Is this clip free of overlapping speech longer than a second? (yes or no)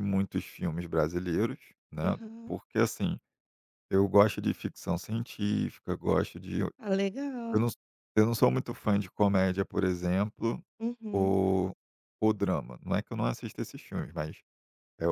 yes